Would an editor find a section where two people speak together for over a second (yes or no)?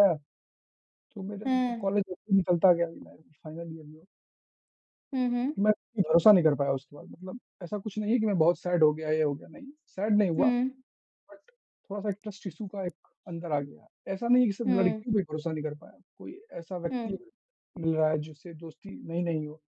no